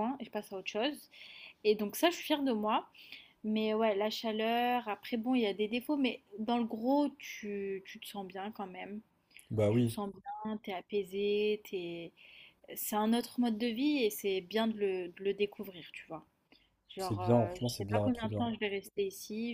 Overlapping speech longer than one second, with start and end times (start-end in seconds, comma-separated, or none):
17.0-18.5